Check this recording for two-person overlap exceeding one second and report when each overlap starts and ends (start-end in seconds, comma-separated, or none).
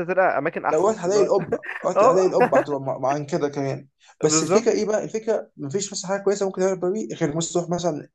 none